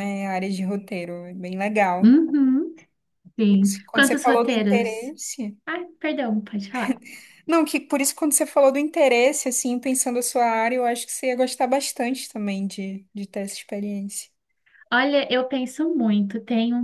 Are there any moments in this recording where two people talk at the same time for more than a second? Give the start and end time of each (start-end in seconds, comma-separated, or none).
3.5-5.1